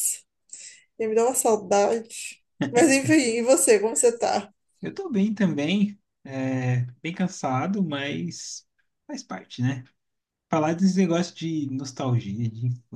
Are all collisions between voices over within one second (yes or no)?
yes